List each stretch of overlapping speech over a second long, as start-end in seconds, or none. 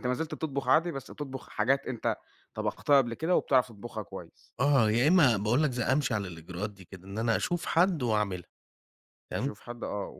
none